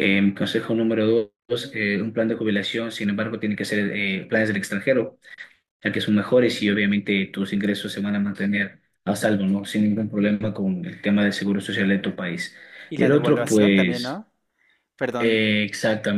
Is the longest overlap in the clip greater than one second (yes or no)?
yes